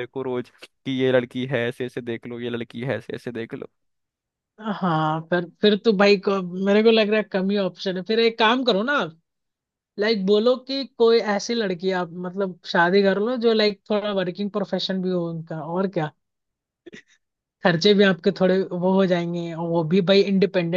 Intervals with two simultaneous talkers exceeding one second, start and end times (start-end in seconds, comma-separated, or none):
none